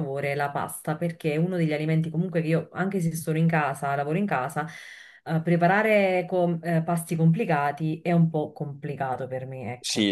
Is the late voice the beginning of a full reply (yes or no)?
yes